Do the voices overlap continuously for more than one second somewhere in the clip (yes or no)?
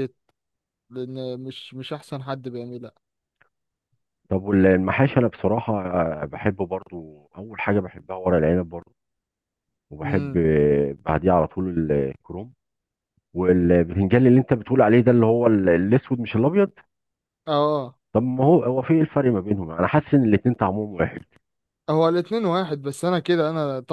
no